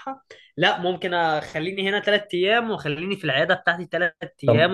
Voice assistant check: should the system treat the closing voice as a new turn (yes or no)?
yes